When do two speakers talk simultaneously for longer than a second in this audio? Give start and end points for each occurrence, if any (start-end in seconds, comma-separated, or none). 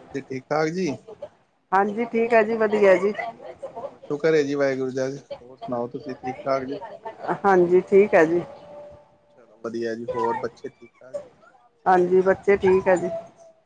none